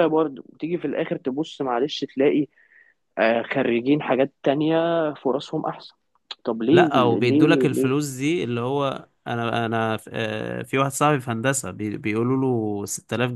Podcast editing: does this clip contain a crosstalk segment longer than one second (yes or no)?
yes